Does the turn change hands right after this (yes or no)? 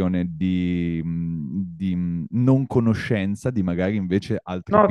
yes